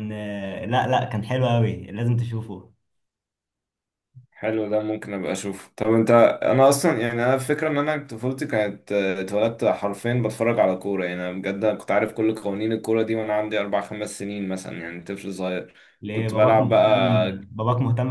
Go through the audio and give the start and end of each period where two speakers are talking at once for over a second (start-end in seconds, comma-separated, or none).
16.1-17.5